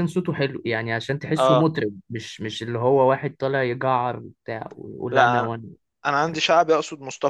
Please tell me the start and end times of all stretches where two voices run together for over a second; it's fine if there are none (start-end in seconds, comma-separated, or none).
none